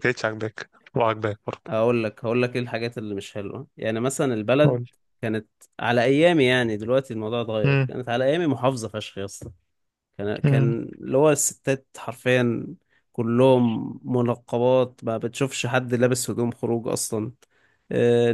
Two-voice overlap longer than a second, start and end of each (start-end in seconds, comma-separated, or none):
none